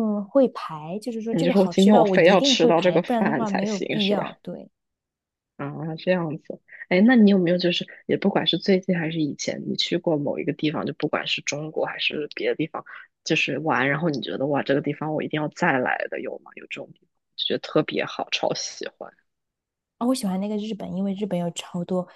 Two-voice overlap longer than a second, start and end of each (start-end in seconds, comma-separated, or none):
1.3-4.3